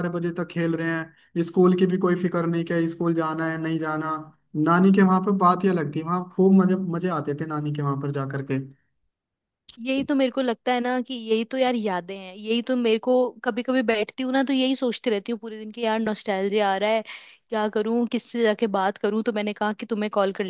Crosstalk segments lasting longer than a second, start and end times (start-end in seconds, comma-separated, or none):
none